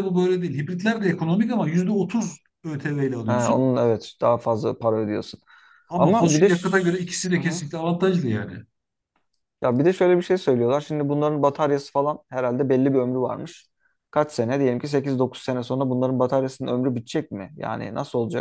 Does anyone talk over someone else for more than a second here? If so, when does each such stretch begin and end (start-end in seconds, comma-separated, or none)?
6.0-7.6